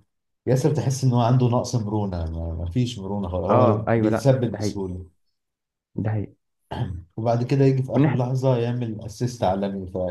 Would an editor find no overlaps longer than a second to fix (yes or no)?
no